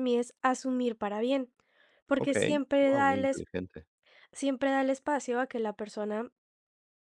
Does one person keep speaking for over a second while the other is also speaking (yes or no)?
yes